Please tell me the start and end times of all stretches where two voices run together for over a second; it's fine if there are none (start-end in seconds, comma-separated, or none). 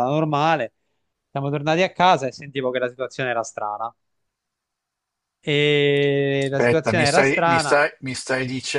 6.4-7.8